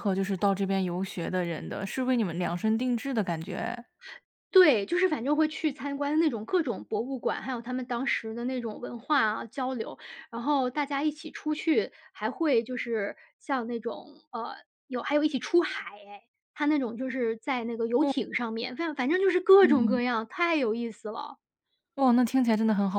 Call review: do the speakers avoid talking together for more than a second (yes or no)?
yes